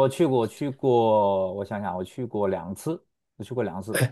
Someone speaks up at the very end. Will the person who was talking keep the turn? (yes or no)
no